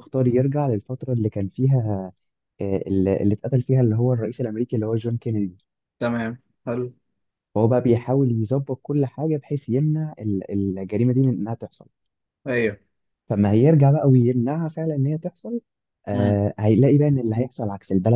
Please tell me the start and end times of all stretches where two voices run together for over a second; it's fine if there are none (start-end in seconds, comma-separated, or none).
none